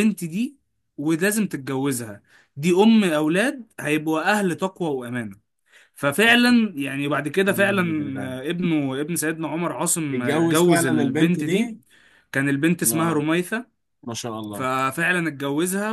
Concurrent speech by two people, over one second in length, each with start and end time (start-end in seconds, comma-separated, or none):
10.1-11.8